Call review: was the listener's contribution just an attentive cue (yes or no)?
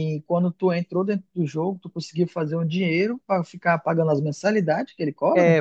no